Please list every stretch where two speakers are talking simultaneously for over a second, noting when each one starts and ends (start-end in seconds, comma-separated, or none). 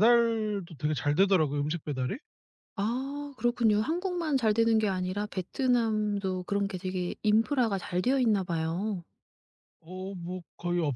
none